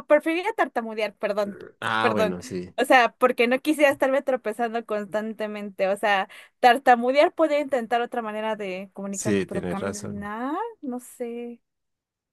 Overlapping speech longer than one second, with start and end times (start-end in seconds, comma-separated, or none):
9.1-10.3